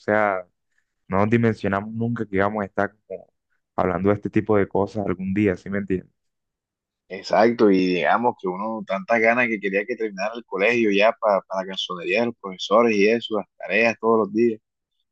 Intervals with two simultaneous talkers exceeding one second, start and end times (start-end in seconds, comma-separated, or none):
none